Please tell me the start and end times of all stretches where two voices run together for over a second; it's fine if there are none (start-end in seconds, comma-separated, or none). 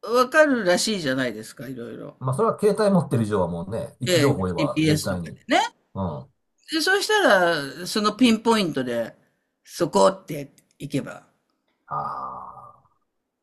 4.1-5.4